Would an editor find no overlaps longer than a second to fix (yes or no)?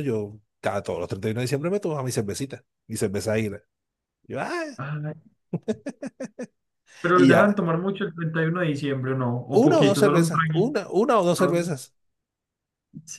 no